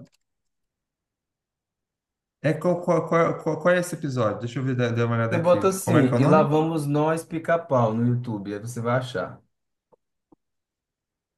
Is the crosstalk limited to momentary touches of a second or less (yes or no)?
no